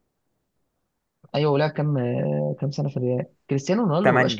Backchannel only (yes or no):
yes